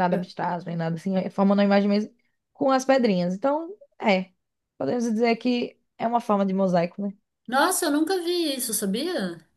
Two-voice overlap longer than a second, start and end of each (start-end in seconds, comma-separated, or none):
none